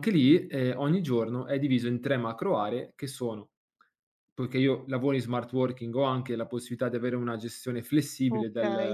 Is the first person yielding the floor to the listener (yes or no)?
yes